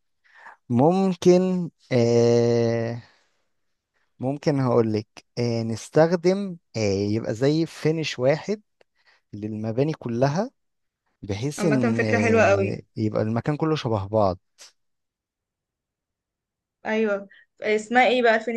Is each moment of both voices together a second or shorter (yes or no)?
no